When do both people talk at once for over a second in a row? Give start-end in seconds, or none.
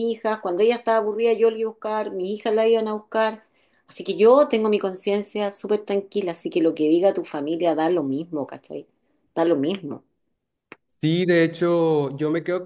none